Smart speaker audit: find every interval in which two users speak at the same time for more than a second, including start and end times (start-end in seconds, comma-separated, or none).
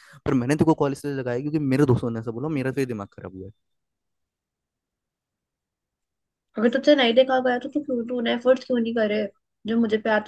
none